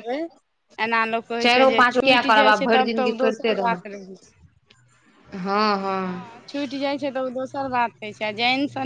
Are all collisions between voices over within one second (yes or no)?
no